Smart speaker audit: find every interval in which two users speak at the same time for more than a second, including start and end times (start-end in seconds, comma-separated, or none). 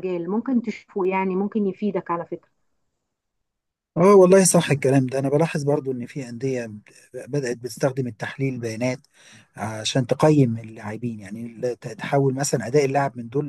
none